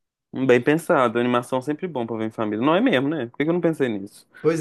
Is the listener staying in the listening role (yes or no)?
no